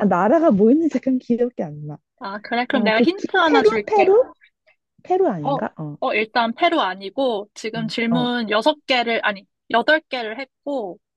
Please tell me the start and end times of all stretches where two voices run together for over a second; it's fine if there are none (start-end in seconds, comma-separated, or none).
2.7-4.1